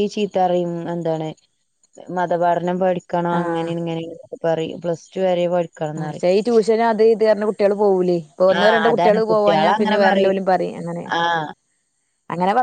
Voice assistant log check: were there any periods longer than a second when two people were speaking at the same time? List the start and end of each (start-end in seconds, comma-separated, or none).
8.6-10.4